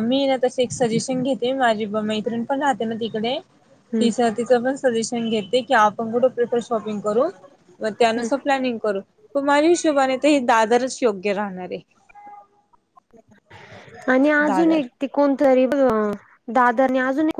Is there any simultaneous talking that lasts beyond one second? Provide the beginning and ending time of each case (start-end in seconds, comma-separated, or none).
none